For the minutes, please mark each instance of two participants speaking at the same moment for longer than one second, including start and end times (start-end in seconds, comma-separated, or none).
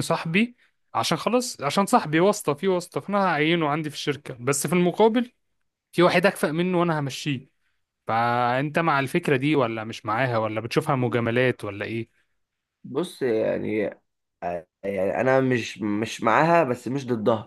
none